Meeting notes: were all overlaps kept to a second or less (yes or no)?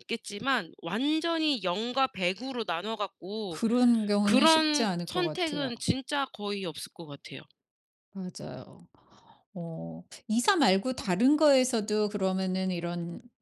no